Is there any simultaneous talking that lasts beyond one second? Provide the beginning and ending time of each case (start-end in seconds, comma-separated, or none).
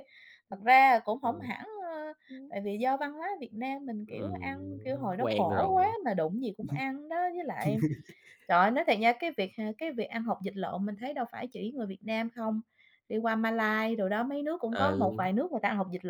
4.1-6.0